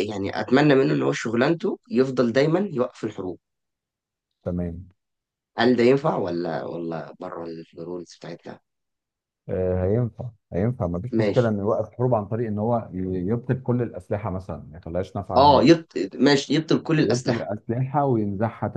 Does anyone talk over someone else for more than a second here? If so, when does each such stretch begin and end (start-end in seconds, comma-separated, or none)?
none